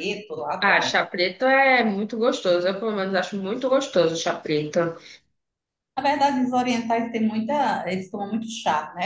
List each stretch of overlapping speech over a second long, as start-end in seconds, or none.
none